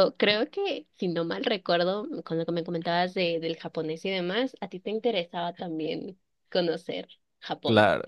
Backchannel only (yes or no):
no